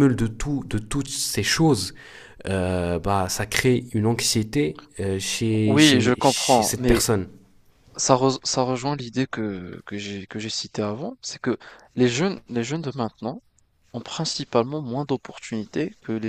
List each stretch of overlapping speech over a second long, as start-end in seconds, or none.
5.7-7.0